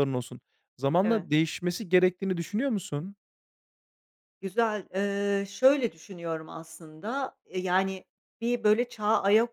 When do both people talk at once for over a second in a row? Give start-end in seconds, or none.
none